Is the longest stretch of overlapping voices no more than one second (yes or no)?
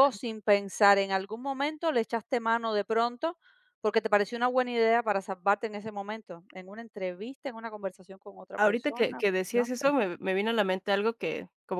no